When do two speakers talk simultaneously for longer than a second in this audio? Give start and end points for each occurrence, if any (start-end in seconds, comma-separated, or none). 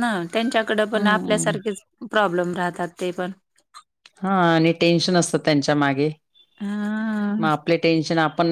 none